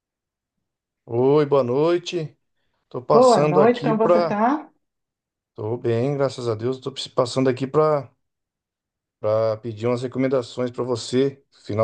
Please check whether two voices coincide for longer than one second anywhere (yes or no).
yes